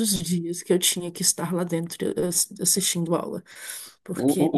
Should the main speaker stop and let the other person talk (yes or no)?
yes